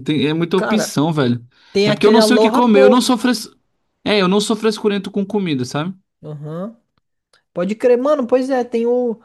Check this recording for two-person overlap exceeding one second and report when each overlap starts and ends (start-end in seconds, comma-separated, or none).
1.8-3.1